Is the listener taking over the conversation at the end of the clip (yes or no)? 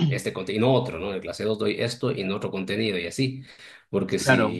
no